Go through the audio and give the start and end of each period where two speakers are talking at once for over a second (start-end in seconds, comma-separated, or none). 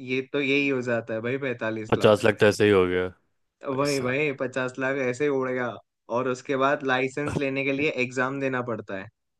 none